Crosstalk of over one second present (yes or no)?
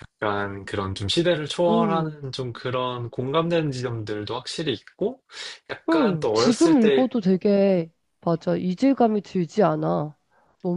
yes